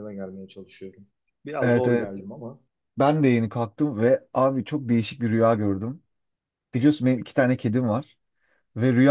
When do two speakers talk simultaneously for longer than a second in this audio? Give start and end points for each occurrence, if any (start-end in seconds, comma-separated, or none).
none